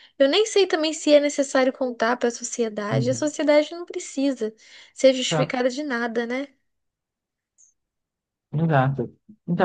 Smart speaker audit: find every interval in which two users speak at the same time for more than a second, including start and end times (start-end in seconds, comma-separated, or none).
none